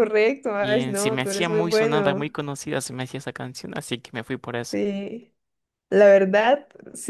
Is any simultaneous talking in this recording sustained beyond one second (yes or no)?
yes